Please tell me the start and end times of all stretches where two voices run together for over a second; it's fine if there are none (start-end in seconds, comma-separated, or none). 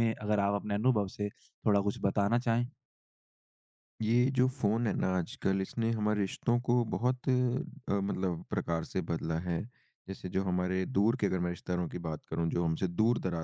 none